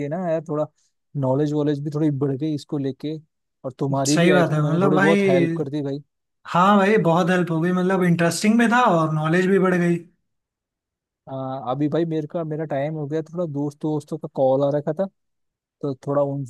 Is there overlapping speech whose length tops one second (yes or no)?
yes